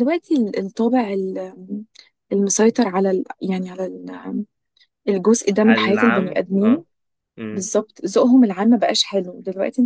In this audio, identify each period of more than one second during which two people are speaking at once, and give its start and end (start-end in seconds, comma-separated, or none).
5.6-6.8